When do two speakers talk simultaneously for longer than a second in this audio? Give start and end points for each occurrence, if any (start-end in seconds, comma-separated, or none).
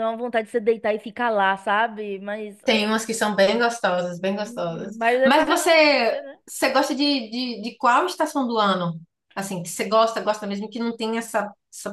4.4-6.4